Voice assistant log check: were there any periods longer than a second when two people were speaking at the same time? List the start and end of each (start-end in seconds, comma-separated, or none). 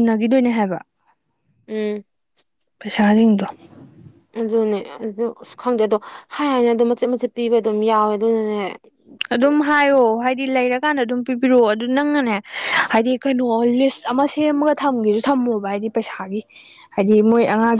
none